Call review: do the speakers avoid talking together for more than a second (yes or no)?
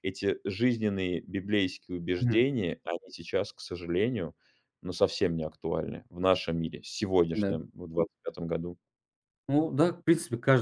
yes